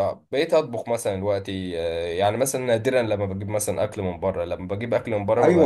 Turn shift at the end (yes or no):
yes